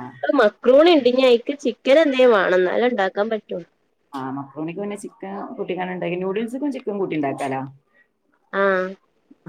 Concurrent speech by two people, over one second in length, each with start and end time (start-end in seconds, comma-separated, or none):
none